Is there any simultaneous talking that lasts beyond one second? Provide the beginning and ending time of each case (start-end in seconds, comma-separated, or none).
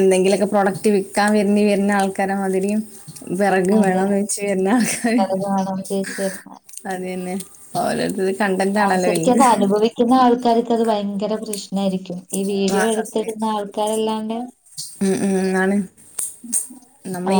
none